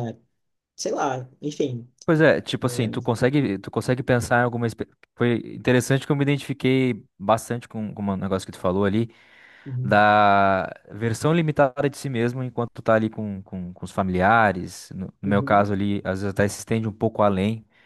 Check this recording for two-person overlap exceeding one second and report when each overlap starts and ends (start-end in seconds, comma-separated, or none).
none